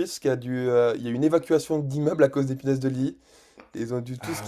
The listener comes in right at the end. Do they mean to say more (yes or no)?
no